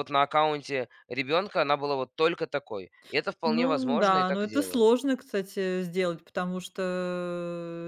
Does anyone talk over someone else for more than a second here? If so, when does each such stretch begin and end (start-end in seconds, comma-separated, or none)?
3.5-4.8